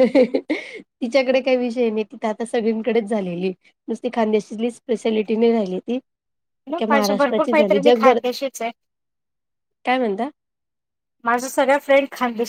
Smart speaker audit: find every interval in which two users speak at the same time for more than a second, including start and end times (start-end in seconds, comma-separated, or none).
6.7-8.2